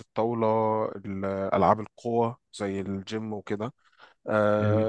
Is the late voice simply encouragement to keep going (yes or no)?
yes